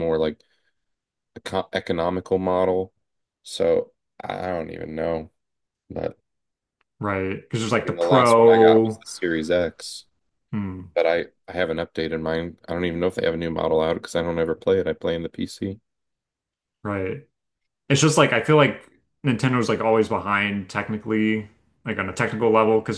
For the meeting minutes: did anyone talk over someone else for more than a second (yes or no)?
yes